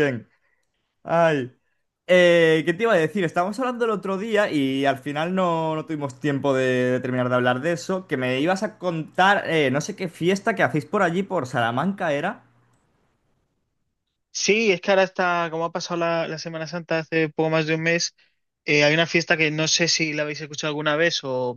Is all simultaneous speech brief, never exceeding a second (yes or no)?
yes